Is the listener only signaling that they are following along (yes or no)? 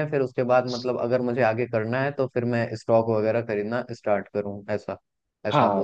no